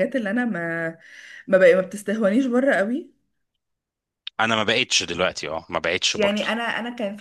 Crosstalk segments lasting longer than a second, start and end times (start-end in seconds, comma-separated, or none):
none